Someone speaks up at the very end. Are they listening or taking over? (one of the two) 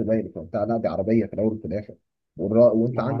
listening